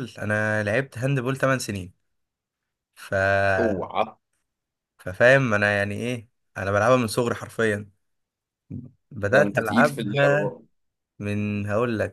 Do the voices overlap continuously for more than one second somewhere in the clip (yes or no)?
yes